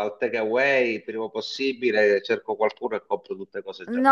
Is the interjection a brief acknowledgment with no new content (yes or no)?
no